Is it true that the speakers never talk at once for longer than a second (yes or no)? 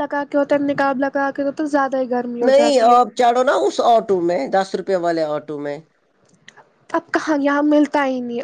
yes